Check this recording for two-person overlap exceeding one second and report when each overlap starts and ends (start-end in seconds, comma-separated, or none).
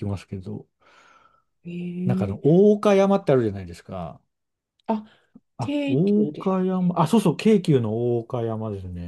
5.6-6.9